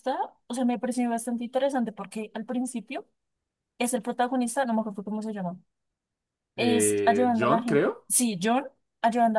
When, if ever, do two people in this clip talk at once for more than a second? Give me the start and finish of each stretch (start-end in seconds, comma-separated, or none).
6.6-8.1